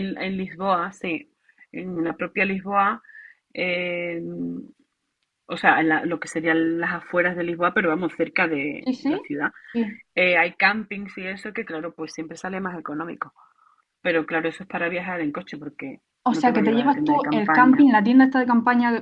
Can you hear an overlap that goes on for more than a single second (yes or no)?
yes